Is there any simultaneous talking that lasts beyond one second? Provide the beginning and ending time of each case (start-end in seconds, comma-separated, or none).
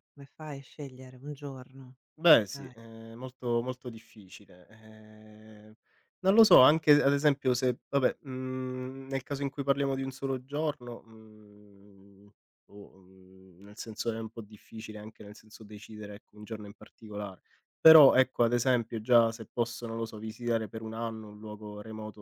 none